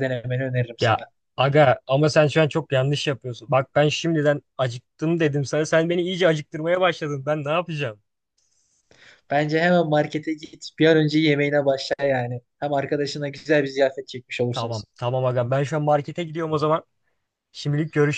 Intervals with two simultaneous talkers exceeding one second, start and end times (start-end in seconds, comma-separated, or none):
none